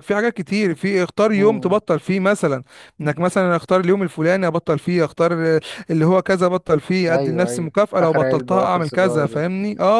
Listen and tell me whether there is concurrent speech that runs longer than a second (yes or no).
yes